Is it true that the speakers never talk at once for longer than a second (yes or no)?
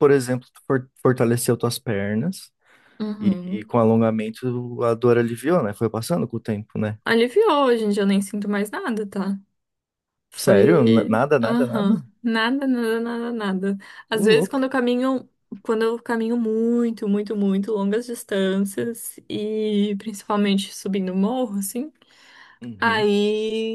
no